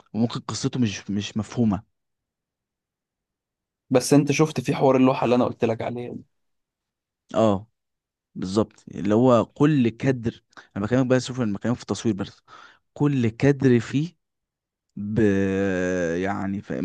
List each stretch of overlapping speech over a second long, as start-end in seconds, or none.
none